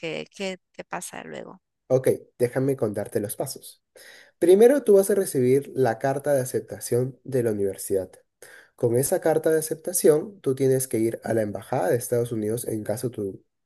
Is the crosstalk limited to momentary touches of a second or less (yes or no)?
yes